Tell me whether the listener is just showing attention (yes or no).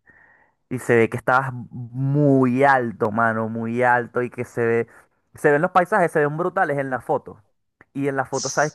yes